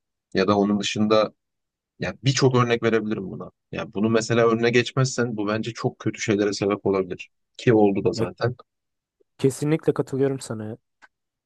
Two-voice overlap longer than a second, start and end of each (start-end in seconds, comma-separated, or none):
none